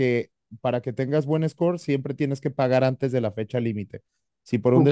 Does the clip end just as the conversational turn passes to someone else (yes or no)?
no